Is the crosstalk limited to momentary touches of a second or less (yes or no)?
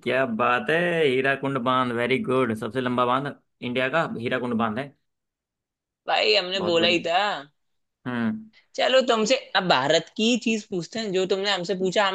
yes